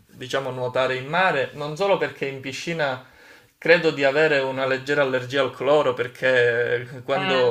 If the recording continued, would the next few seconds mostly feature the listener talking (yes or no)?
no